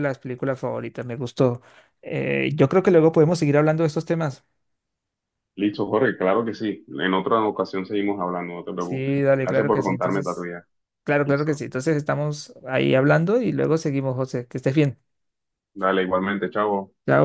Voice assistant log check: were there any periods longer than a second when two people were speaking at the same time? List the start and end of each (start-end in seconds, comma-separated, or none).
8.8-10.5